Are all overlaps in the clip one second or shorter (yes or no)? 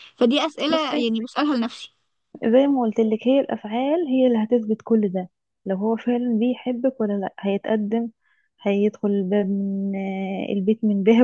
yes